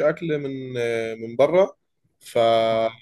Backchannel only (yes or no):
yes